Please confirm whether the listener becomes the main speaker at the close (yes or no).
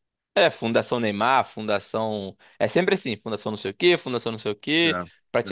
no